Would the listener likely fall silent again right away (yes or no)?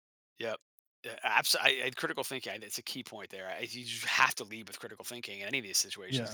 yes